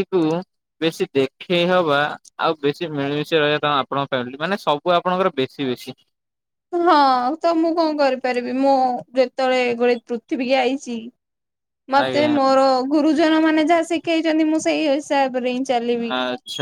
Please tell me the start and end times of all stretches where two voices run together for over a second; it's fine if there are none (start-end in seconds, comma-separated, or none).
none